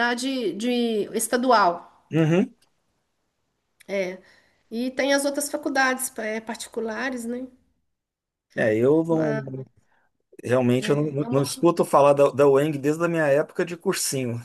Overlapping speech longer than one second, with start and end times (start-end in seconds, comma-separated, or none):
none